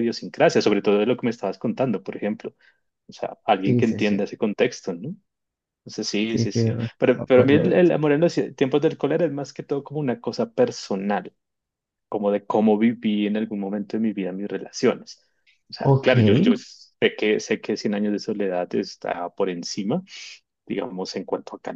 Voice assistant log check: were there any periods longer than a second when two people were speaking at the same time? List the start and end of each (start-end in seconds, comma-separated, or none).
6.3-7.9